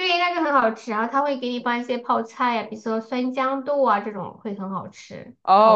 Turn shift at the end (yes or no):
yes